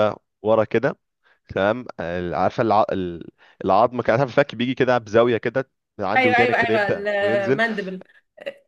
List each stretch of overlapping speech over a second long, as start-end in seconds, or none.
6.2-7.6